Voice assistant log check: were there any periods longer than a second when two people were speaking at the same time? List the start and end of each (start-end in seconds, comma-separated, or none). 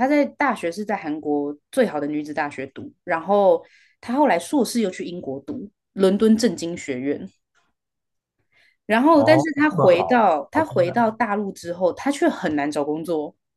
9.1-11.1